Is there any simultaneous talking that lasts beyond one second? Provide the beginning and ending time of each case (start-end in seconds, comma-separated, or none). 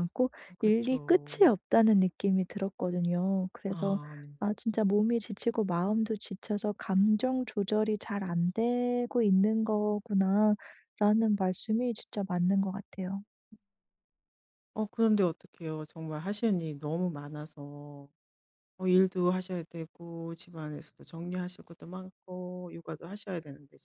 none